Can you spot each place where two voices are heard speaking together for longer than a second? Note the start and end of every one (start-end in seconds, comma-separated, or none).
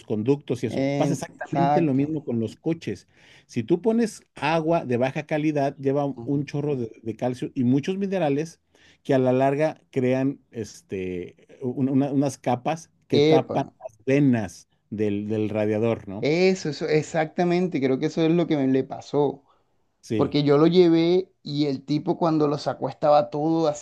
0.8-2.1